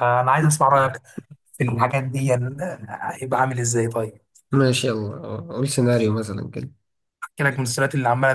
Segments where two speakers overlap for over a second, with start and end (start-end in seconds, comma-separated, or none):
none